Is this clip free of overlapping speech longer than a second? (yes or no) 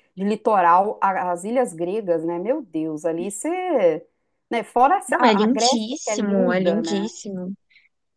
no